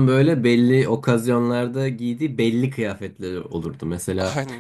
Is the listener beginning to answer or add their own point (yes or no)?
no